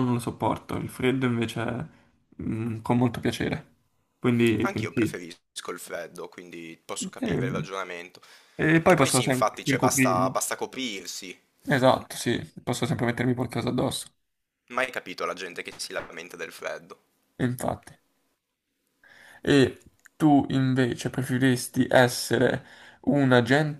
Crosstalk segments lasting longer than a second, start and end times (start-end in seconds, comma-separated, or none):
8.8-10.4